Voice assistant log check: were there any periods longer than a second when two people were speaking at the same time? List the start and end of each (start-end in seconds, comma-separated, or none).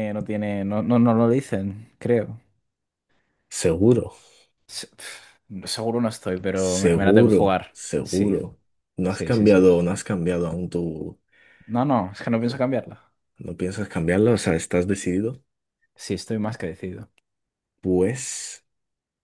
6.5-8.3